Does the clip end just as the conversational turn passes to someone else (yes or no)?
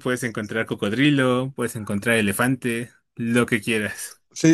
yes